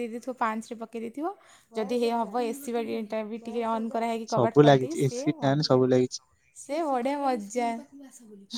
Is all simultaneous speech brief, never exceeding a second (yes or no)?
no